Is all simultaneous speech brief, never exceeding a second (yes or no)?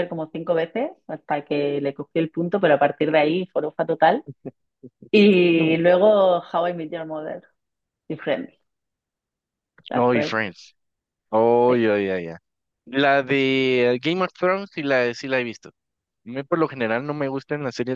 yes